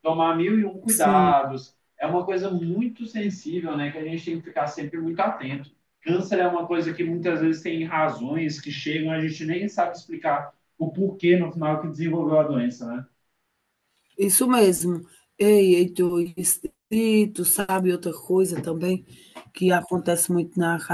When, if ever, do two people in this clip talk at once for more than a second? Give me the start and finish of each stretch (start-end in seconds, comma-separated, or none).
none